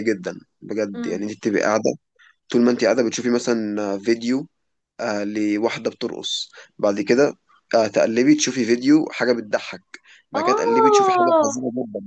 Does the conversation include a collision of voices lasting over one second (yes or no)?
yes